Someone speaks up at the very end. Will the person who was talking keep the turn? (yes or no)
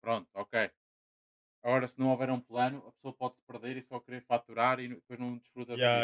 no